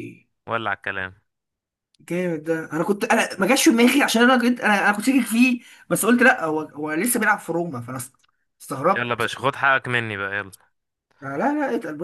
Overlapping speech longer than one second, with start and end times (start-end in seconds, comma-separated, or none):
none